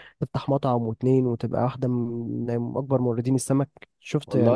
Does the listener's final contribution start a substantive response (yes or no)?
yes